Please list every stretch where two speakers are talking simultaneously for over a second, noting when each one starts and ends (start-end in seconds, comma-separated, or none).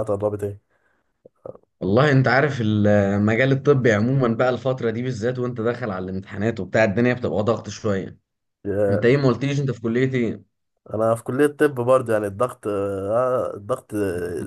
none